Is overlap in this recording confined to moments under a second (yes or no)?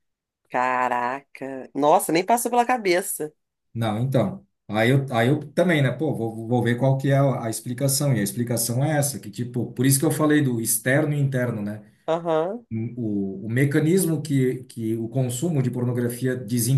yes